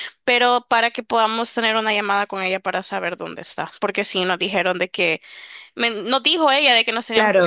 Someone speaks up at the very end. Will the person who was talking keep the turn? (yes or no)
yes